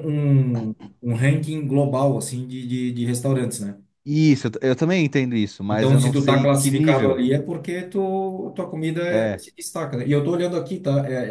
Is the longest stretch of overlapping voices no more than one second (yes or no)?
no